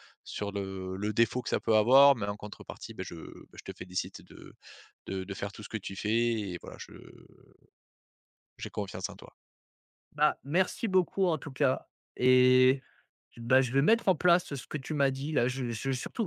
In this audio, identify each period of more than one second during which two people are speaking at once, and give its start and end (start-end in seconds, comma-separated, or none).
none